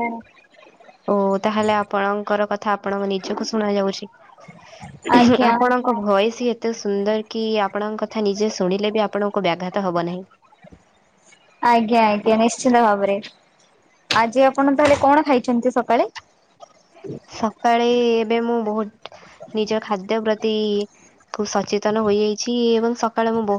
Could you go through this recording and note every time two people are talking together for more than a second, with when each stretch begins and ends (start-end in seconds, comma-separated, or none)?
none